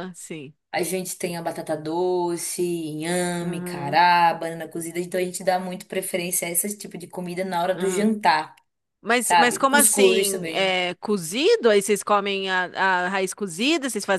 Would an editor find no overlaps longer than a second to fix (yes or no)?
no